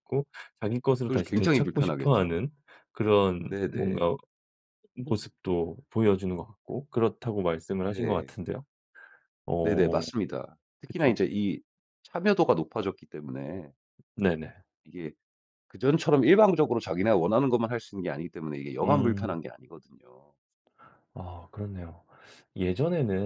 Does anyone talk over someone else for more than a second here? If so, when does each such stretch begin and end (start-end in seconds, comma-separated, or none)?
1.0-2.4